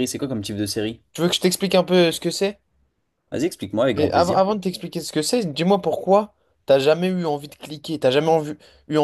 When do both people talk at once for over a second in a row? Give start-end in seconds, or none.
none